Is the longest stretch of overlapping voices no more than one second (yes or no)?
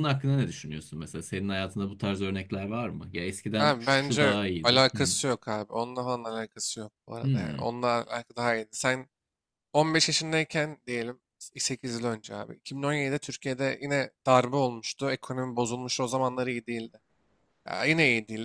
no